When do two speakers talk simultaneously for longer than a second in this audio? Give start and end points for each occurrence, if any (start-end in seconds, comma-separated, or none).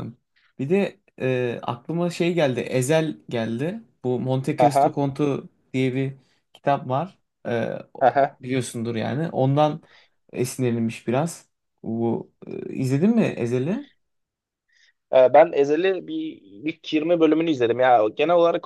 none